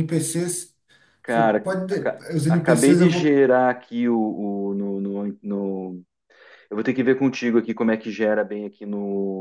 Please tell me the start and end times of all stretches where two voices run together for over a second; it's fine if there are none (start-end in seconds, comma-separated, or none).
1.2-3.4